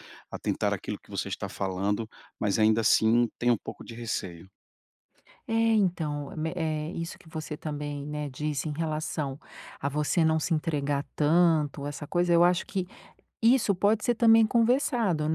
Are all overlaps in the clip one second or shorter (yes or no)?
yes